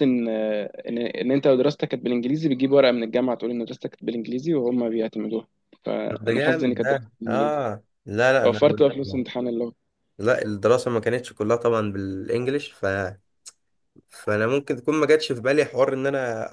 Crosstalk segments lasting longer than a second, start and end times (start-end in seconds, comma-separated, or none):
6.1-7.6